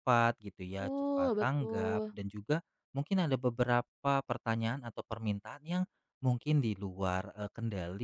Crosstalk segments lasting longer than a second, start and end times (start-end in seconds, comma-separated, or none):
0.6-2.1